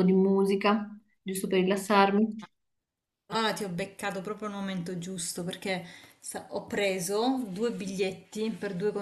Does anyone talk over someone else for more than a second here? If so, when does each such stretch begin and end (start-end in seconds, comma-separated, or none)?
none